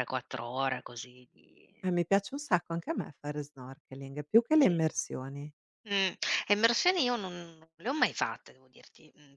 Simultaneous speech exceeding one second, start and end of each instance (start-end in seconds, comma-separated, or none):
none